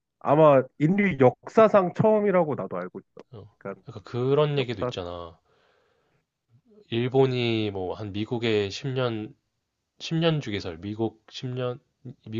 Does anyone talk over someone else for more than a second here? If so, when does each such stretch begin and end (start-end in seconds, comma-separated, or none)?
none